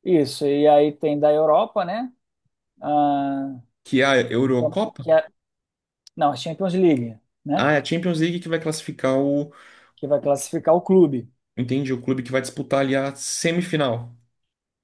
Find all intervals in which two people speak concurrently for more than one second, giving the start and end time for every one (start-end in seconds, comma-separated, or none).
none